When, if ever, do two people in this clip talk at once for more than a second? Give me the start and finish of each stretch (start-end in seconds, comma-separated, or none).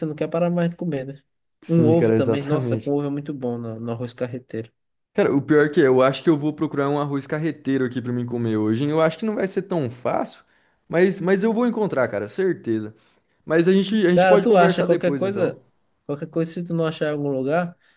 1.7-3.0, 14.1-15.5